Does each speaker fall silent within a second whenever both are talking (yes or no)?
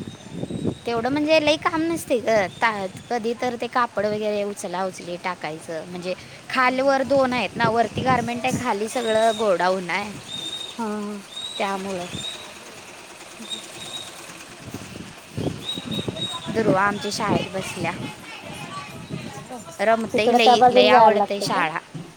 no